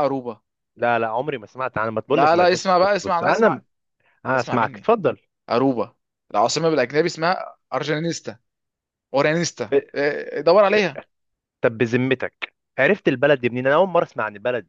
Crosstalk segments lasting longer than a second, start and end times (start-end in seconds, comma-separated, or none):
2.1-3.6